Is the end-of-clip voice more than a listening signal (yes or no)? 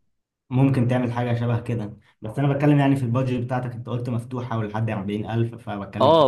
yes